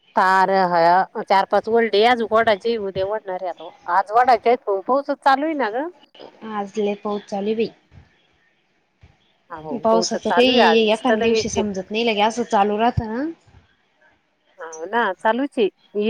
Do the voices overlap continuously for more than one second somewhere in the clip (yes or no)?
yes